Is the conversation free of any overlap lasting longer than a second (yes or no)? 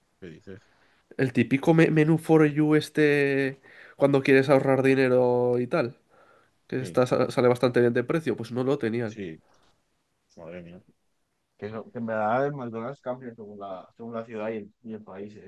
yes